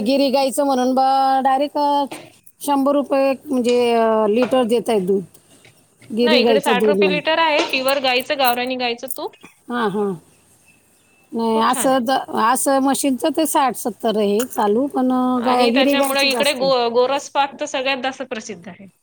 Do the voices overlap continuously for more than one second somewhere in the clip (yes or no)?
yes